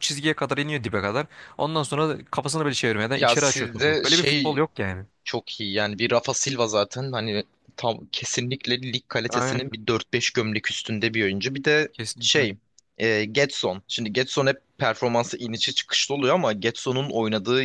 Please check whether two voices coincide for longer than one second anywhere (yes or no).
yes